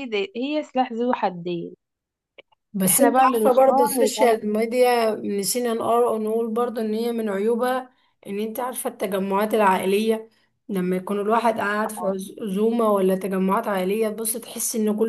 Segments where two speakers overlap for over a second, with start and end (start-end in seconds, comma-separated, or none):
2.9-4.5